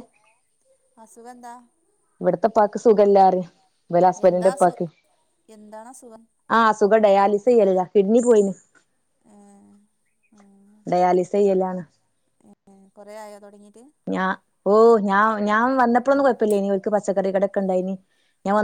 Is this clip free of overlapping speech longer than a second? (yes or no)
yes